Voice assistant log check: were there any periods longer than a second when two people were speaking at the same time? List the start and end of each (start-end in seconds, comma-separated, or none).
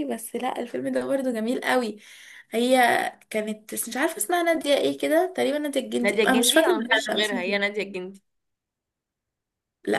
6.0-7.7